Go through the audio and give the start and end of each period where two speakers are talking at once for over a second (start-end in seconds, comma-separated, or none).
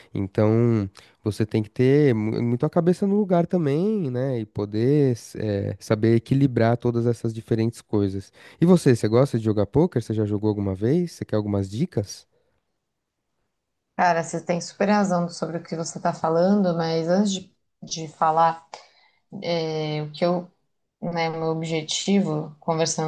none